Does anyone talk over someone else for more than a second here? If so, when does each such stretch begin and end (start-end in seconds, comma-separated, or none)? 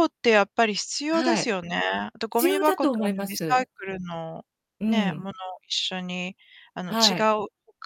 2.3-3.7